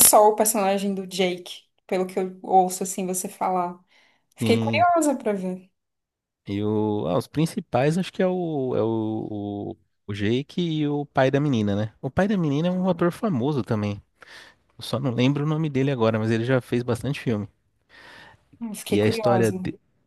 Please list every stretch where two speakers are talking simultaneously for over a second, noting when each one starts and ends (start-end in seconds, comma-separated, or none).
none